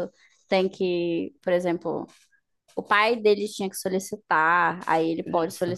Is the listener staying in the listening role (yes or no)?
yes